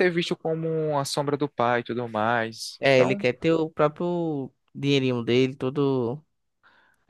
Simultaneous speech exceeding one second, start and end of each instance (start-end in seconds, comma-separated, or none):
none